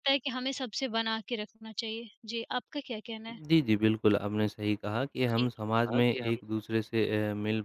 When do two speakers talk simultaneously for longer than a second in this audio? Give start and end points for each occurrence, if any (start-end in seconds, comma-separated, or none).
none